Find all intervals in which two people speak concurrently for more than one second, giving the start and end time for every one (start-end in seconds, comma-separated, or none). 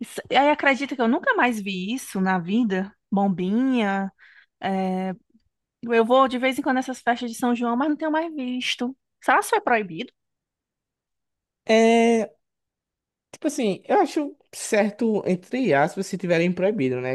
none